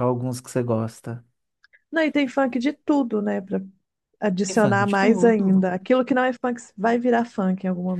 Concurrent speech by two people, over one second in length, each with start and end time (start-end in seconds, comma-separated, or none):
4.5-5.7